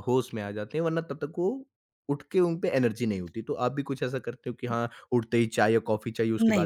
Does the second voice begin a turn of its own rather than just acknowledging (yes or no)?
yes